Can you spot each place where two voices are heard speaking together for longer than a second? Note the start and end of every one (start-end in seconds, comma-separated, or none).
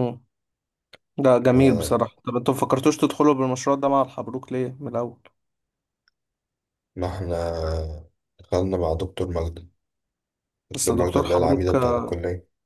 10.8-12.1